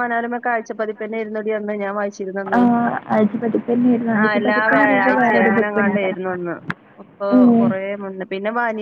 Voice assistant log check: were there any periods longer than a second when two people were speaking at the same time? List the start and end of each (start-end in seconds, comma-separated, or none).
4.2-6.1